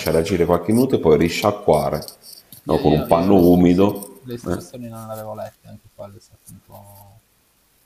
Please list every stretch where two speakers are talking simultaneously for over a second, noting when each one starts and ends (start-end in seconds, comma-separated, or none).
2.7-4.8